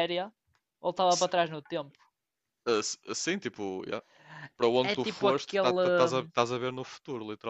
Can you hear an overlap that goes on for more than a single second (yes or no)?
yes